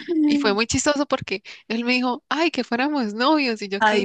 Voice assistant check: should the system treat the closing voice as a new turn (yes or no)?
no